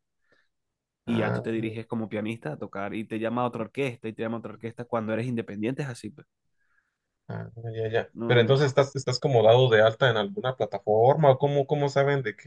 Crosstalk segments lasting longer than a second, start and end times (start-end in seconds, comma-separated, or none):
none